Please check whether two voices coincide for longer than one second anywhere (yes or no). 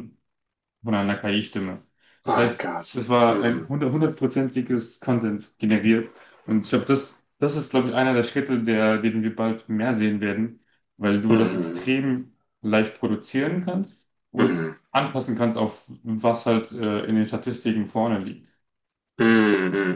yes